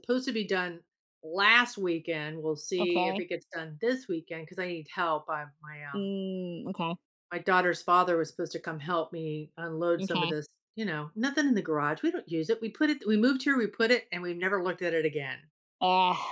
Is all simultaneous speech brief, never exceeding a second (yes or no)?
yes